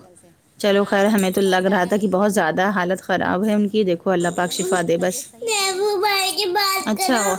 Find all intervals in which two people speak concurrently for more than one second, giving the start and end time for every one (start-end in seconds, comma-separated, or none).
0.8-2.6, 4.4-6.0